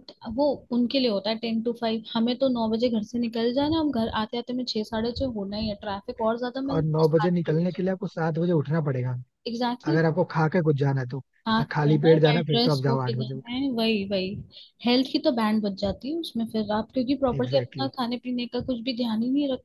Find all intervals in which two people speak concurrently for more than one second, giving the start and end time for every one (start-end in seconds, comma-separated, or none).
6.7-7.9, 11.5-13.4